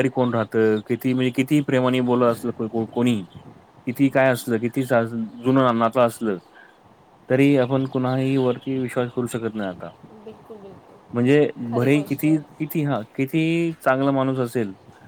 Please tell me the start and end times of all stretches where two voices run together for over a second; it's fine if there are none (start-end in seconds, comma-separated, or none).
11.1-12.7